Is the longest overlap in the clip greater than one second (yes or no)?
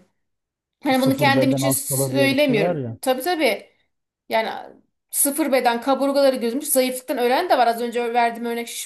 yes